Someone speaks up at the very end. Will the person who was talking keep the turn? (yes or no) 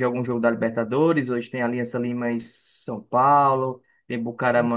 yes